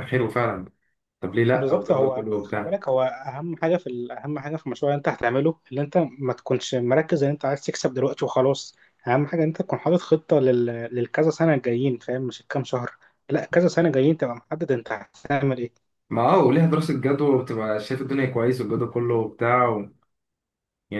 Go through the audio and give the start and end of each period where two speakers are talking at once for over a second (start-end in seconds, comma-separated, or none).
1.5-2.8